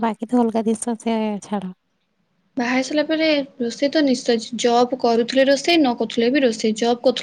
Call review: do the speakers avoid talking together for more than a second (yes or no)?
yes